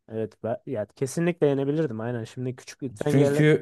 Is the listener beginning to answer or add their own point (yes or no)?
yes